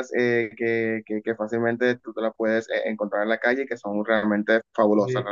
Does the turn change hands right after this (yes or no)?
no